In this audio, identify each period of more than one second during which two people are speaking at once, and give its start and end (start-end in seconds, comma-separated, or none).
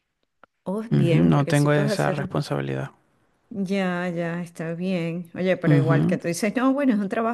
0.9-2.3